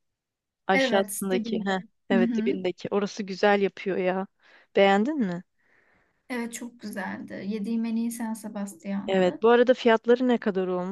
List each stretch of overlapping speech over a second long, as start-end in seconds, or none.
0.7-2.6